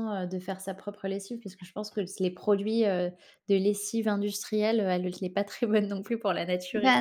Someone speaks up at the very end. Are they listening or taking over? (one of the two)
taking over